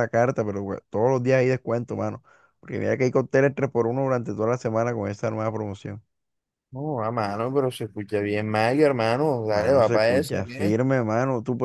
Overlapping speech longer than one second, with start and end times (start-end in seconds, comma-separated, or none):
9.5-10.8